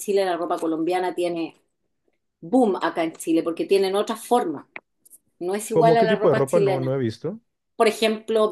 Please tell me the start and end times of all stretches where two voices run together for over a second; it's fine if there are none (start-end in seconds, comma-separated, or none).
5.7-6.9